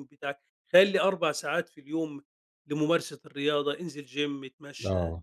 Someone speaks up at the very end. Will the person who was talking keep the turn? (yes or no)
yes